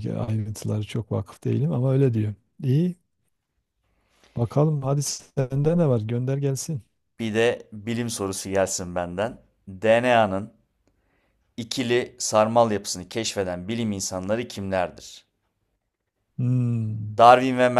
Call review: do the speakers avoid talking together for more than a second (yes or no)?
yes